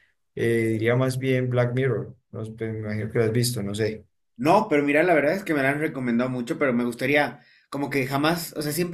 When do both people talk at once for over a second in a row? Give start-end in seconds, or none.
none